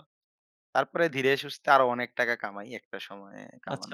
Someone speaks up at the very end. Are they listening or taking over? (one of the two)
taking over